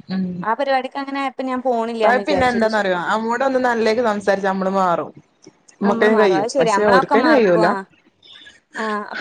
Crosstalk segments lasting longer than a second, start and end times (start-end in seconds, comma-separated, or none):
5.9-7.7